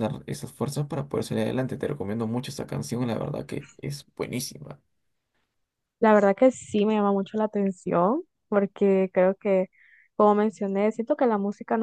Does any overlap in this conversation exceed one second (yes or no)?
no